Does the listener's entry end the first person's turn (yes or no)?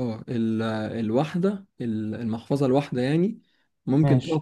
no